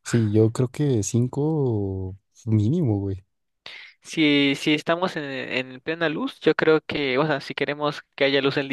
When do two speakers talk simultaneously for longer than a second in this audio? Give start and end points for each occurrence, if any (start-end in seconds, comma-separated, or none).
none